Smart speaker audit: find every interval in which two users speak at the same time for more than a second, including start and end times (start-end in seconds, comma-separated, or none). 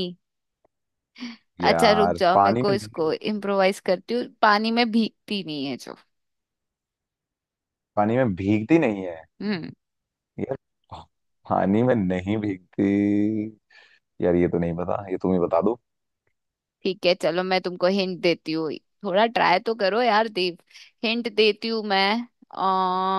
1.6-3.3